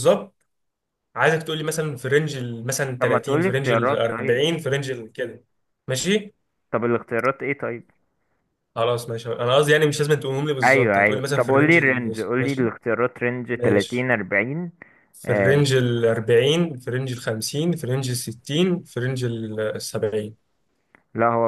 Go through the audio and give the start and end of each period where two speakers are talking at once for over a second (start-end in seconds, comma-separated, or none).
3.0-4.4, 10.7-12.7